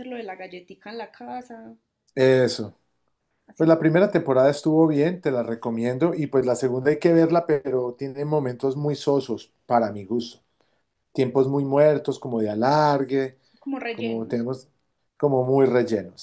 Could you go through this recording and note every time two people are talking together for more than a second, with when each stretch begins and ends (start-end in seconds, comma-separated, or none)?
none